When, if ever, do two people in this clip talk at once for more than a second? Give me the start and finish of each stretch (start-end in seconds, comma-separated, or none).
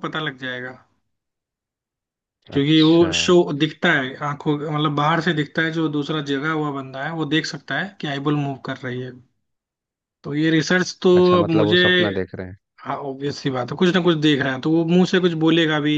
none